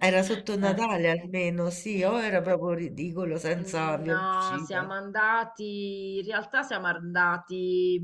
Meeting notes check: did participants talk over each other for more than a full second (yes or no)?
yes